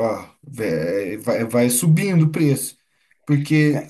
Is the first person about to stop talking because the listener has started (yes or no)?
no